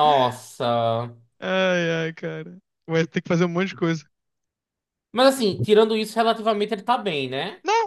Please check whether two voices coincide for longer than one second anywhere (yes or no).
no